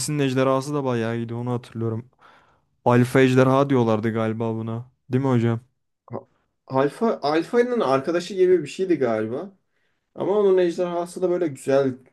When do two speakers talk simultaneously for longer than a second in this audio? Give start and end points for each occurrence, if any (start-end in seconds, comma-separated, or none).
none